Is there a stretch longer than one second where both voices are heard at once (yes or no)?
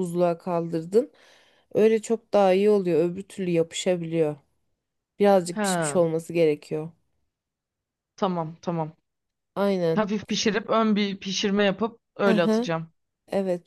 no